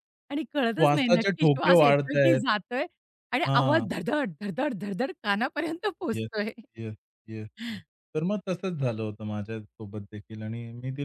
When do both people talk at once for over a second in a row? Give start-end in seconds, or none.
0.8-2.4